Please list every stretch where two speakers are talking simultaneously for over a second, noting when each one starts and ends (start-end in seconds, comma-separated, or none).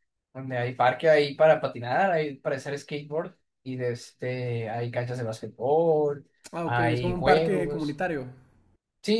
6.6-8.0